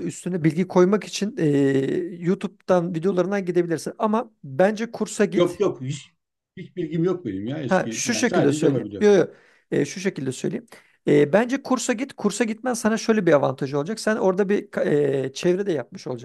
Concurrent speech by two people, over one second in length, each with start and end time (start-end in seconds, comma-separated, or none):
7.7-9.1